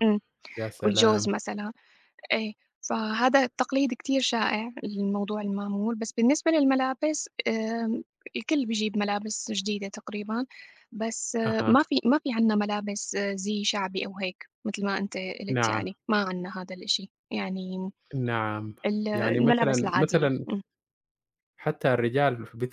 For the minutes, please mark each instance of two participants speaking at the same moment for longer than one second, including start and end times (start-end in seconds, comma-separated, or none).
19.1-20.5